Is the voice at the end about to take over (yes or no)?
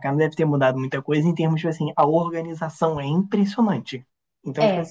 no